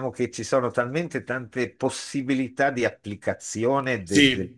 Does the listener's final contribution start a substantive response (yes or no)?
no